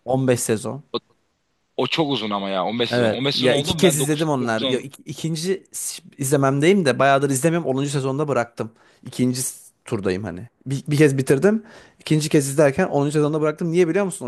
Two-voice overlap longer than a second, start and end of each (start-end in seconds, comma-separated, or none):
2.9-4.8